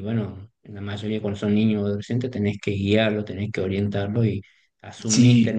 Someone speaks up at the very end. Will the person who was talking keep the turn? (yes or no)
yes